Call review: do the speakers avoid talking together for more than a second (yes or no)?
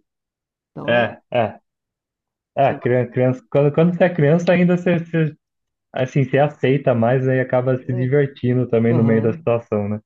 yes